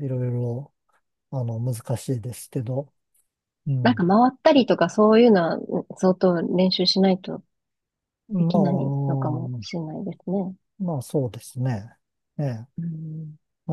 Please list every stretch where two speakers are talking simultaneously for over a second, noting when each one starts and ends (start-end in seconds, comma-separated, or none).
8.4-9.8